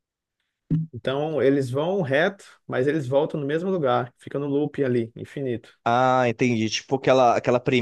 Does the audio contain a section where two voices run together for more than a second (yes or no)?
no